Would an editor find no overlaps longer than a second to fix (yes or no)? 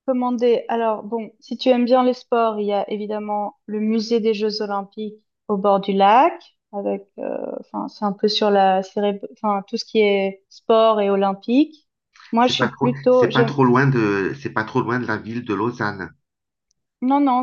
no